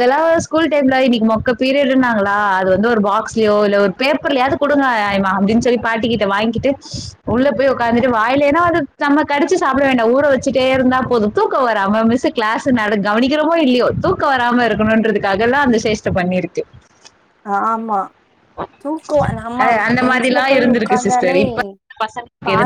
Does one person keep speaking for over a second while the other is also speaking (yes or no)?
yes